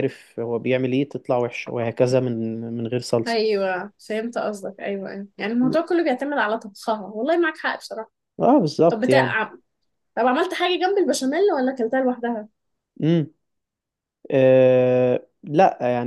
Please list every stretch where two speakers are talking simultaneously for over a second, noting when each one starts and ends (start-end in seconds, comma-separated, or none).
none